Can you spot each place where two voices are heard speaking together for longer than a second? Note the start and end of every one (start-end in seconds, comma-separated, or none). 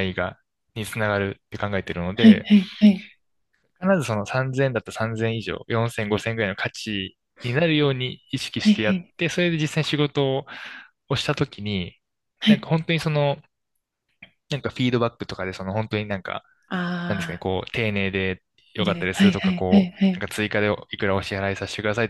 18.8-20.2